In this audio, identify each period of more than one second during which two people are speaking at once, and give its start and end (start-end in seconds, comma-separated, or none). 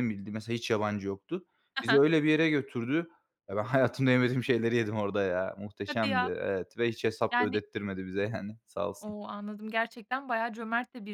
none